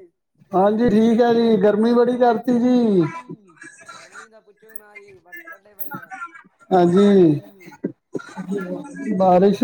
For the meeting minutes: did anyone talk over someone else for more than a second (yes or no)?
yes